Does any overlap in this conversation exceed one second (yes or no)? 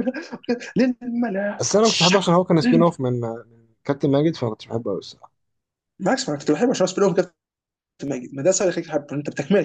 yes